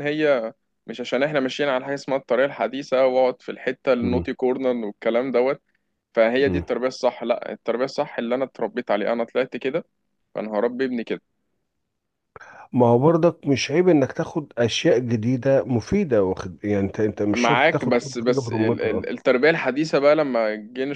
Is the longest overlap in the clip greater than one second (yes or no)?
yes